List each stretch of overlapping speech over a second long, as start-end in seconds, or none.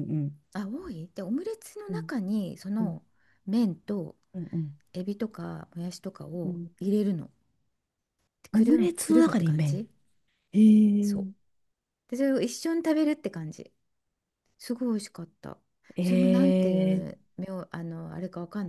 8.5-9.9